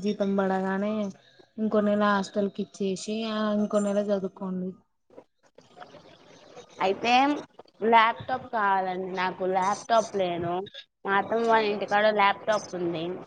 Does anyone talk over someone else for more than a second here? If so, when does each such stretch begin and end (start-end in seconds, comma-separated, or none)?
none